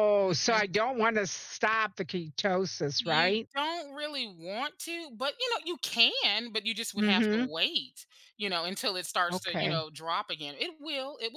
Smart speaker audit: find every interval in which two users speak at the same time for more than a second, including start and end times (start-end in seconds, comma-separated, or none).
none